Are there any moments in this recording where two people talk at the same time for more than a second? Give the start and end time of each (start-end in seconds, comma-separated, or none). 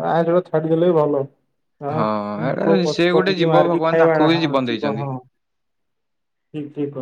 2.7-5.0